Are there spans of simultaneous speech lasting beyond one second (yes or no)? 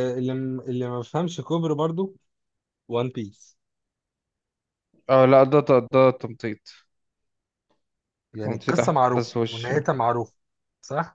yes